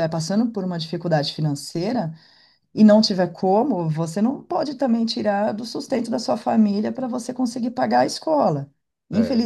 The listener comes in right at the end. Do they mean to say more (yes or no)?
no